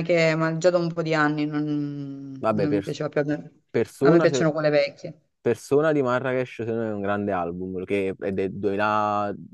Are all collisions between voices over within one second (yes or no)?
yes